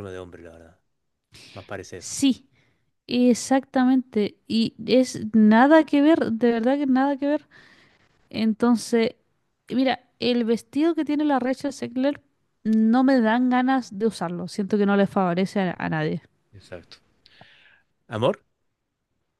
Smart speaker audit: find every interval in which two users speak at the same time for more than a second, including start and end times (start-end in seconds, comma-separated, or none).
none